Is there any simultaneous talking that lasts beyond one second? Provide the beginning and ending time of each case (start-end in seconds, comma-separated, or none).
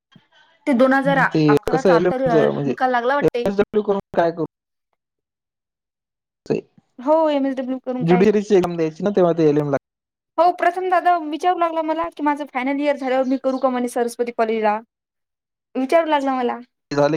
0.9-3.5